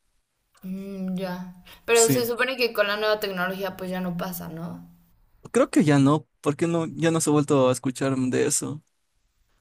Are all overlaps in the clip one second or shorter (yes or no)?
yes